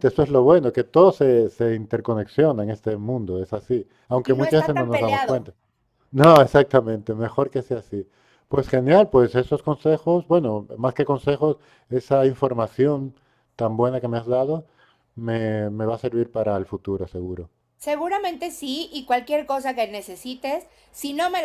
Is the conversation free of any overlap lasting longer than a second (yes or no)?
no